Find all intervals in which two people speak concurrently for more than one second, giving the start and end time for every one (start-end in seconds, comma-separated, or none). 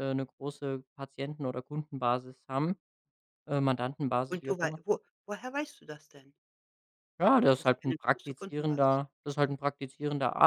7.6-9.0